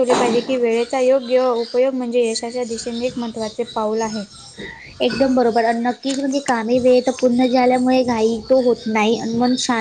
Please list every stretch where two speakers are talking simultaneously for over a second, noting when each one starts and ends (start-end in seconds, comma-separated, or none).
none